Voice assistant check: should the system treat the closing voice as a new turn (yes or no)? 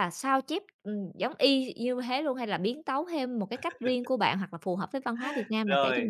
yes